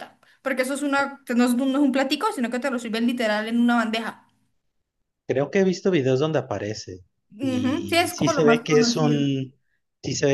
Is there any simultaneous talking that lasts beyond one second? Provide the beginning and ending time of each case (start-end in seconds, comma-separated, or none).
7.4-9.3